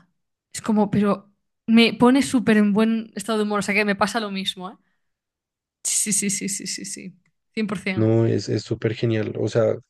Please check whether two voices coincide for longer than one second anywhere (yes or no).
no